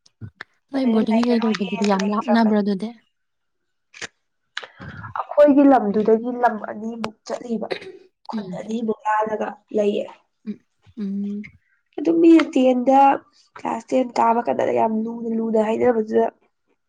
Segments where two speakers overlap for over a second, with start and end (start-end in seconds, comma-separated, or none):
0.8-2.6